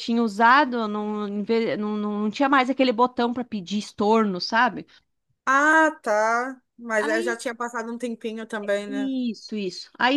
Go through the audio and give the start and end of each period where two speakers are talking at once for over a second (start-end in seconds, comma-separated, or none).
none